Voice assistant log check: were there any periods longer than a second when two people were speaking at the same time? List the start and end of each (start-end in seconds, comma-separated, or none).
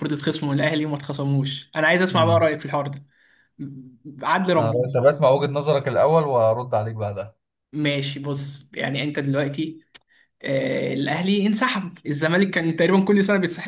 none